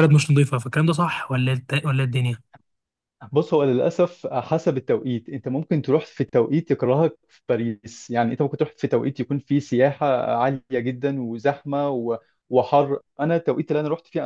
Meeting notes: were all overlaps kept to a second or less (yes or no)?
yes